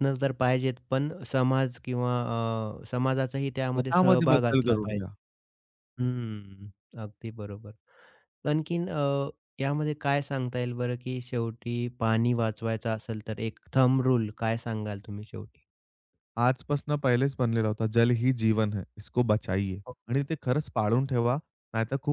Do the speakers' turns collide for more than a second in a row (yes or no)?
yes